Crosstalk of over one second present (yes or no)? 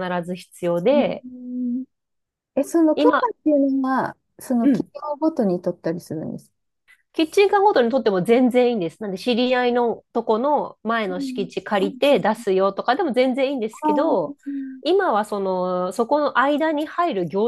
no